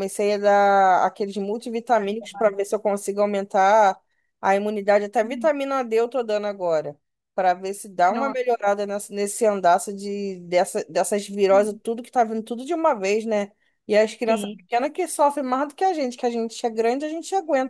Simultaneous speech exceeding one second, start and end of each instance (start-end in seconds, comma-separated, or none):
none